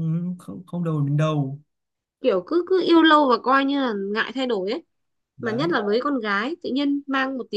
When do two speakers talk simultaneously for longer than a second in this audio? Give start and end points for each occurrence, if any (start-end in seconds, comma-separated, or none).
none